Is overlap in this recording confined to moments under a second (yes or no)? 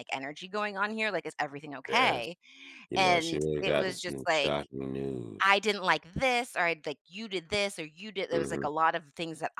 no